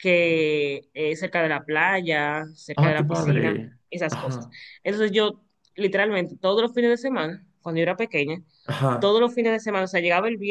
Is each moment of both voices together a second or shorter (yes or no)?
no